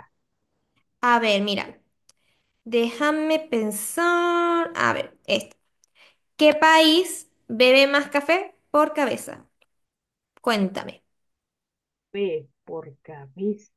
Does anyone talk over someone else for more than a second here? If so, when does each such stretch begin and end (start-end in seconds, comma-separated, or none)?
none